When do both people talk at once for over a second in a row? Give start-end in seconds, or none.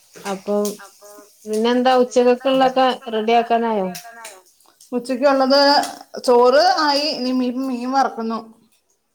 2.0-3.9